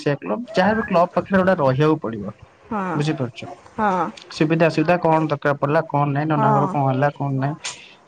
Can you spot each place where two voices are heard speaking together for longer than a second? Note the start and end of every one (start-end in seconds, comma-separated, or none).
none